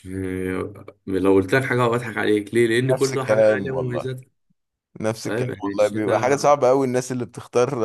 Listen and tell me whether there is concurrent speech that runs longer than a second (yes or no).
yes